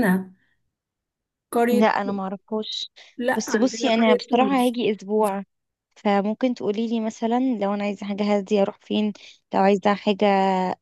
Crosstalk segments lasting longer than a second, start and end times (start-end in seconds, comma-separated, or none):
3.4-4.8